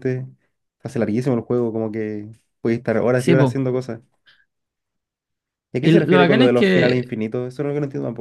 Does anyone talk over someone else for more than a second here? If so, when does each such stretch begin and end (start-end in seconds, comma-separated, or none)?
5.8-7.1